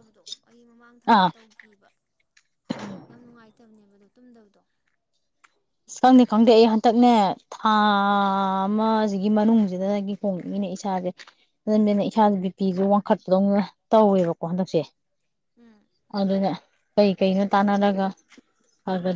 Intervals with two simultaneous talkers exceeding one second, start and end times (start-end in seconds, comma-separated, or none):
none